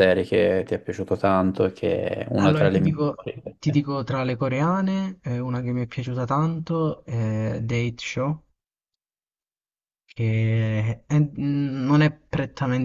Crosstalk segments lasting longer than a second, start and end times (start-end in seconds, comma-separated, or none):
2.4-3.8